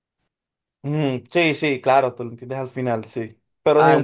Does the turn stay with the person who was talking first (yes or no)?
yes